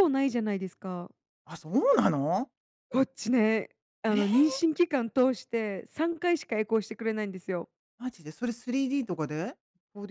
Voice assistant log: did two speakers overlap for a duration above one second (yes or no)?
no